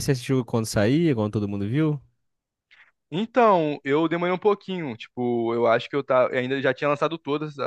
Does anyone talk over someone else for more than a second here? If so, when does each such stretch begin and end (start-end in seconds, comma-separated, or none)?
none